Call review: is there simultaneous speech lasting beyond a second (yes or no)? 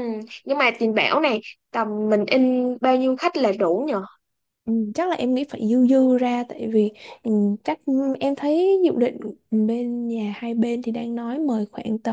no